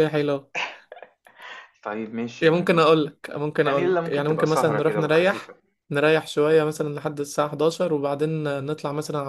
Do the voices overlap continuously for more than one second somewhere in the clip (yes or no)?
yes